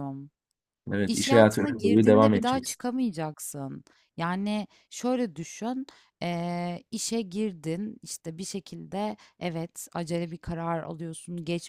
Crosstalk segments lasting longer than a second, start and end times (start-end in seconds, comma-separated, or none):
1.1-2.8